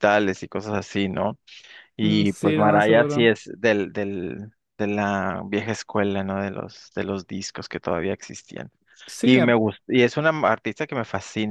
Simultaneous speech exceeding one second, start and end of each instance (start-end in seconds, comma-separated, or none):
2.0-3.3